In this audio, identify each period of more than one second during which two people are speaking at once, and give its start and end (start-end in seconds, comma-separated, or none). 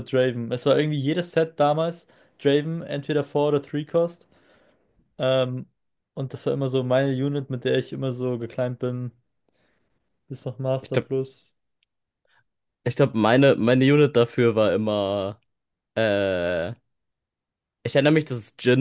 none